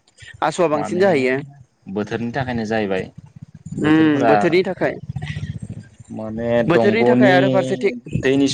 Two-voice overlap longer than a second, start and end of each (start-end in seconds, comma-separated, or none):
6.7-7.9